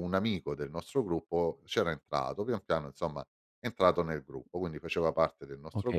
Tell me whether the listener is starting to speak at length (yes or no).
yes